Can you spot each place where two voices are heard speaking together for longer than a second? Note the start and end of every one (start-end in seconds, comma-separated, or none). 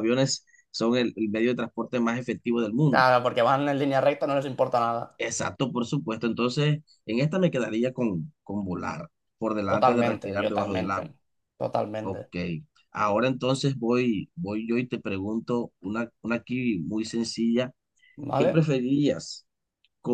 9.7-11.1